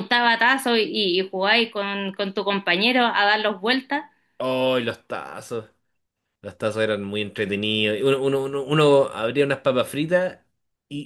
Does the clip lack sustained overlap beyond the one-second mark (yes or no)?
yes